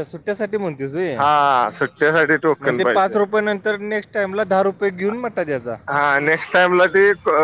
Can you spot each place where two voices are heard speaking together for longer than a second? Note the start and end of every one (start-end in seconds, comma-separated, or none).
none